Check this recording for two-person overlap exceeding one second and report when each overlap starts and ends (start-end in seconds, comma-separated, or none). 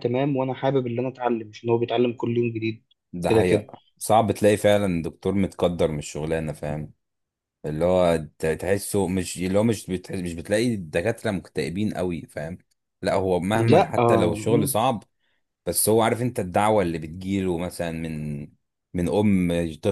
13.5-14.7